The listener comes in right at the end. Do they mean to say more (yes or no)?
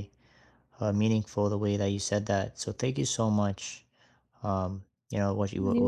no